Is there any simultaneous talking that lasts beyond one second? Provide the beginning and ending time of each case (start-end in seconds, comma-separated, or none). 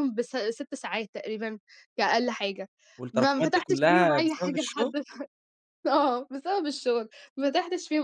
3.1-4.9